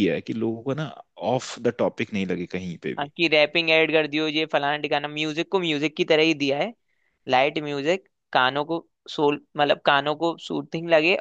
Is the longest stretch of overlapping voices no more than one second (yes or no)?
yes